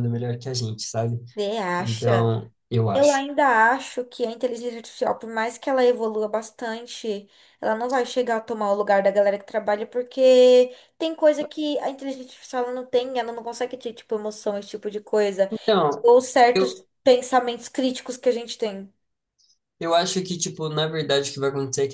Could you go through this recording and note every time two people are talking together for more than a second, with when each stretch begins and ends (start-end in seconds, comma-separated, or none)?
none